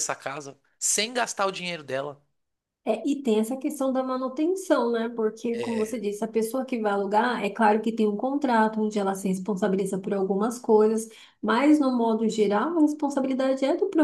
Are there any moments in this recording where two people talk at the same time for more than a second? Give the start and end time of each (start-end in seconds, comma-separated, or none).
none